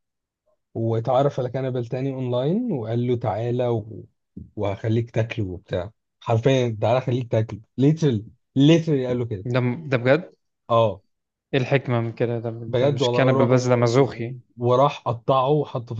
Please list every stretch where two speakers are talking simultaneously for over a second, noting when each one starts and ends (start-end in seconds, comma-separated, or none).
12.7-14.3